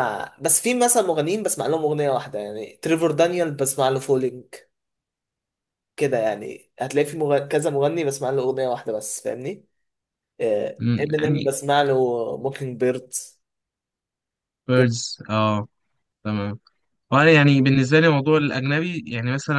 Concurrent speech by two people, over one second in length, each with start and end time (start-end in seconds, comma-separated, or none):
none